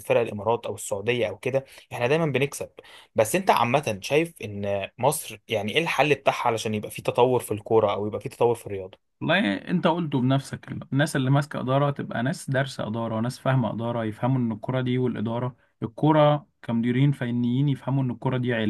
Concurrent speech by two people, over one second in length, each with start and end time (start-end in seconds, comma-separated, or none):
none